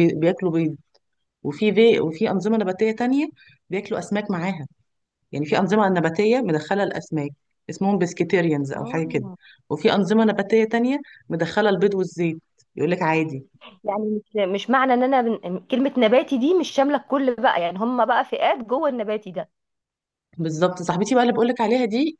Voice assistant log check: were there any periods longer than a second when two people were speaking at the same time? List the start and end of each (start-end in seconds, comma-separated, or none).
none